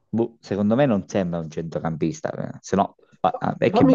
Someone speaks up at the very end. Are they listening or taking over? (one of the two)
taking over